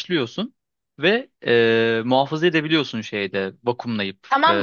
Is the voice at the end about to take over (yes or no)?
yes